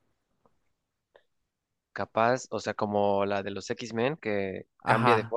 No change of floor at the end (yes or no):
no